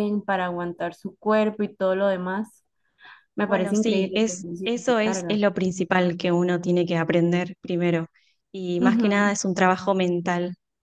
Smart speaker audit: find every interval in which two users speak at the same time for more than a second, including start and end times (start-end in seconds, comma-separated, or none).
3.4-5.4